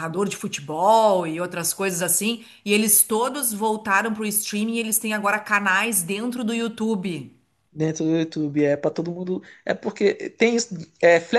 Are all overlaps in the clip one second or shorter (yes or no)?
yes